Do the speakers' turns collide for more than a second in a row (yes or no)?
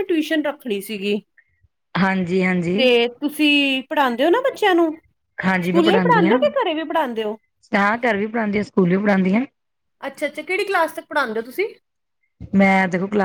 no